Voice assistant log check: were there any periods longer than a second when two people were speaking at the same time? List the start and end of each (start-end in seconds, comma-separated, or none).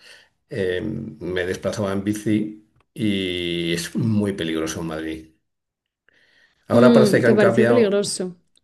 6.7-8.0